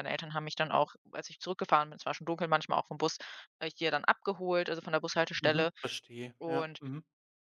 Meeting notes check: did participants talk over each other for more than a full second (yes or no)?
no